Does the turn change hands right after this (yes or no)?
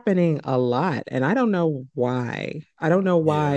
no